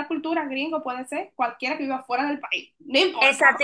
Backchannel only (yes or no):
no